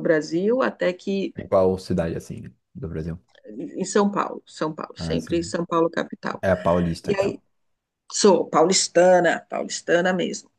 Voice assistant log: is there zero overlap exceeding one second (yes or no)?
yes